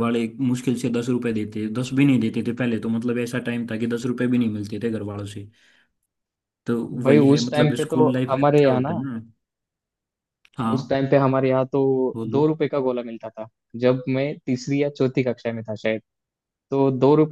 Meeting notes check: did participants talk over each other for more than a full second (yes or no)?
yes